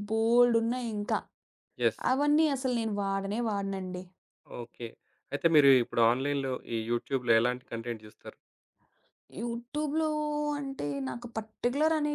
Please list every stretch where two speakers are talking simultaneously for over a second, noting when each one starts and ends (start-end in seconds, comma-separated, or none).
none